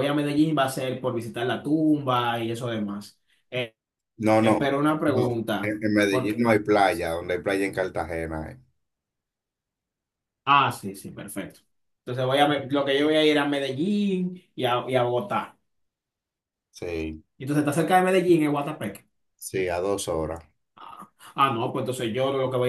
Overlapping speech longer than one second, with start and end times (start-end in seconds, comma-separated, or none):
4.4-6.5